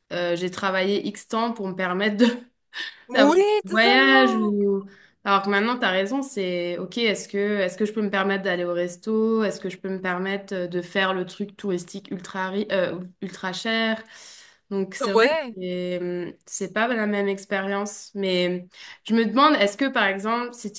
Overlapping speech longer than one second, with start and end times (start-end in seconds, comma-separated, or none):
3.1-4.5